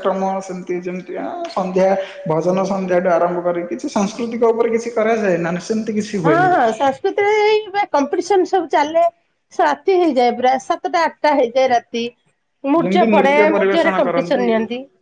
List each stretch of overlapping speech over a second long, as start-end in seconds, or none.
12.8-14.4